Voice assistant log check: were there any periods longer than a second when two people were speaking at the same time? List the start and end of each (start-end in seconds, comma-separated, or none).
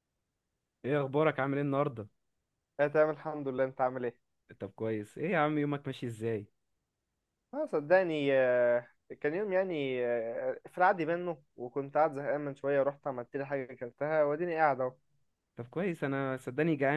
none